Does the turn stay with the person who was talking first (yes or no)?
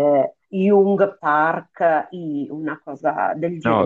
no